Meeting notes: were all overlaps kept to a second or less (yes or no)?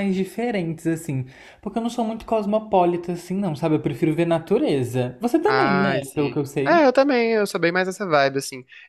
no